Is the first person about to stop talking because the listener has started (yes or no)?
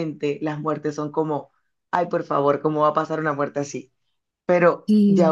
no